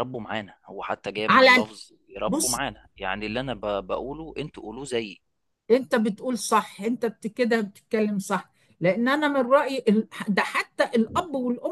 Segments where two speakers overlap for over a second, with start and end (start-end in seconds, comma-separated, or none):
none